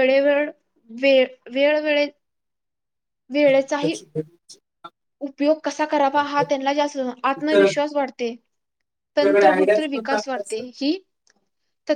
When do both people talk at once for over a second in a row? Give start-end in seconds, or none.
9.2-10.6